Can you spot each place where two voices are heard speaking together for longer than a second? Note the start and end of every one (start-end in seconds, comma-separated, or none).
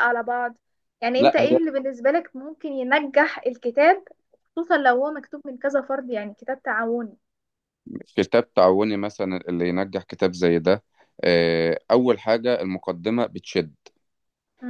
none